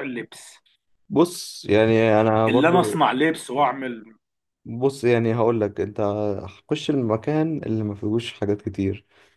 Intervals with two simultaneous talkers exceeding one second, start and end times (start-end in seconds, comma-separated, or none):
none